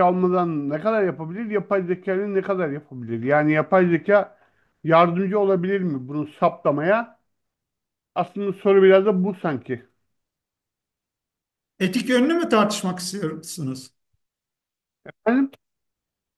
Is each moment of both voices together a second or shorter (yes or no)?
yes